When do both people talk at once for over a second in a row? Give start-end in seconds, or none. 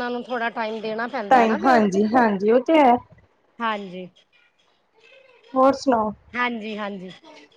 none